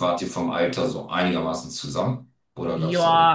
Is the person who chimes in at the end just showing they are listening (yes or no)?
no